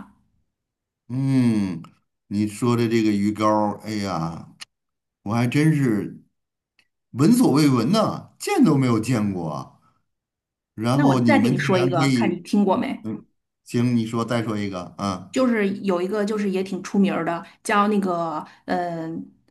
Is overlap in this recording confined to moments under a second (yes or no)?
no